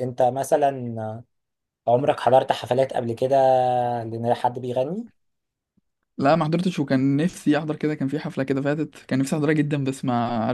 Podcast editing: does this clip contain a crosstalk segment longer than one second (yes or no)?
no